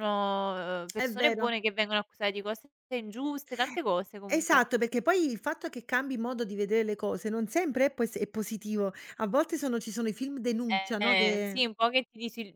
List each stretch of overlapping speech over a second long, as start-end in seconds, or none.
none